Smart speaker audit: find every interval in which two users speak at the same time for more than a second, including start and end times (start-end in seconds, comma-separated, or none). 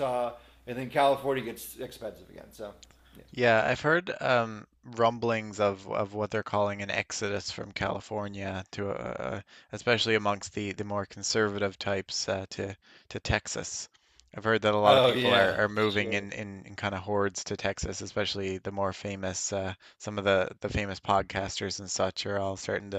14.8-16.3